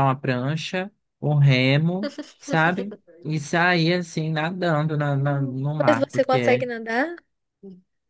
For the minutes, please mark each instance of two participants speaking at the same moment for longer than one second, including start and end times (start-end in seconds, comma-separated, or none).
5.1-6.7